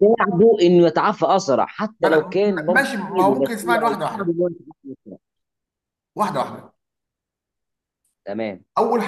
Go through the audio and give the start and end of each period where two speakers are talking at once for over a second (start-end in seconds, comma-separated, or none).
2.0-4.3